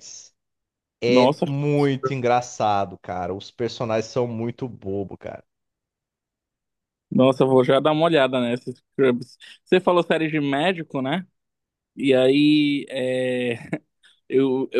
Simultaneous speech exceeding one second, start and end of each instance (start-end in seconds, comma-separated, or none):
none